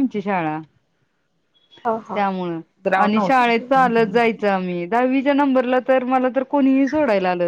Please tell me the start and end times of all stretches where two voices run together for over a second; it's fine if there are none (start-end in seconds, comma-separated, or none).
3.0-4.3